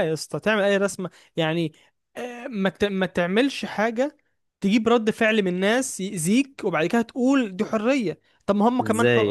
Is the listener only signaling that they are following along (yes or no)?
yes